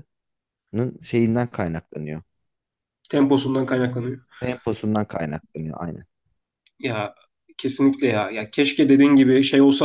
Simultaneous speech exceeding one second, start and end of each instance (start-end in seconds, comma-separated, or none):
none